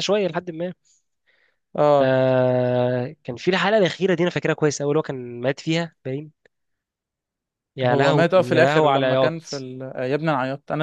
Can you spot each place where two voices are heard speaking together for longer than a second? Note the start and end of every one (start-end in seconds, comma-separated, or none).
7.8-9.7